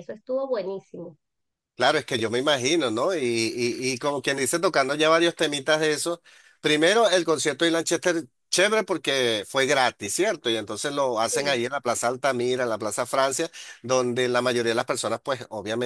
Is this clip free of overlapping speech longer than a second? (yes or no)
yes